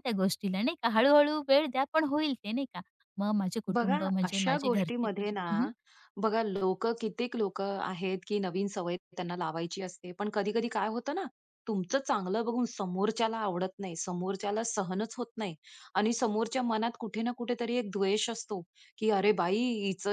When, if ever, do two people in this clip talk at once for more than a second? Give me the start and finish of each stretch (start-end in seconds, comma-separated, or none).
3.8-5.4